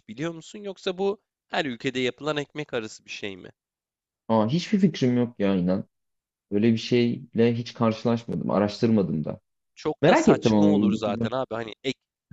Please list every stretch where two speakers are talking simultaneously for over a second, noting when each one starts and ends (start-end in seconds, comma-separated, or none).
10.0-11.3